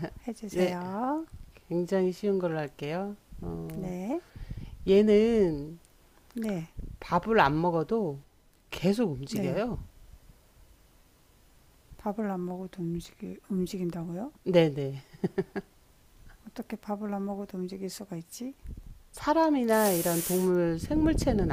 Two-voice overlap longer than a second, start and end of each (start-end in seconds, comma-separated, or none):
none